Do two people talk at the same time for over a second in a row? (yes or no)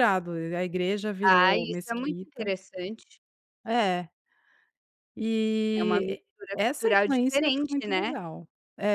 yes